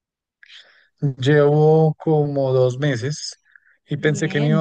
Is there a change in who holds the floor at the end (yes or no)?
no